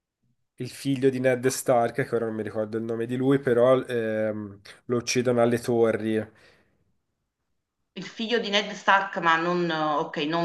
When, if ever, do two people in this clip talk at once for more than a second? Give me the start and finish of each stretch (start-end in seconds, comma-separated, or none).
none